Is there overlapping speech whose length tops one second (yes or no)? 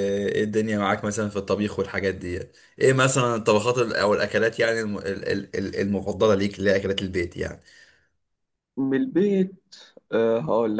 no